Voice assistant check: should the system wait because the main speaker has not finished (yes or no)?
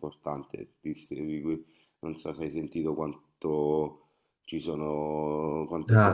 yes